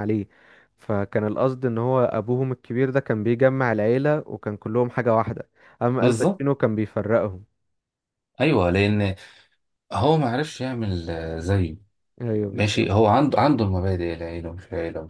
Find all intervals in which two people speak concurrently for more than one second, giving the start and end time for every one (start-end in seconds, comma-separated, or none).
none